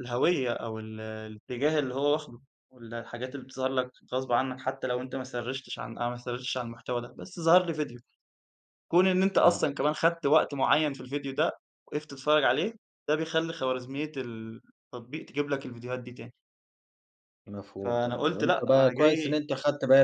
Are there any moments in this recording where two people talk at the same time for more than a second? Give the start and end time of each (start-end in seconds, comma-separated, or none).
17.8-19.4